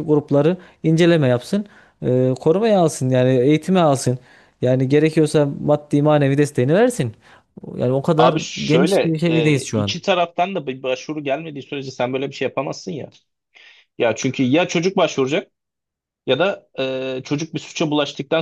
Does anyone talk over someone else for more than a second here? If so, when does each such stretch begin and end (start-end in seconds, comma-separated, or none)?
8.2-9.9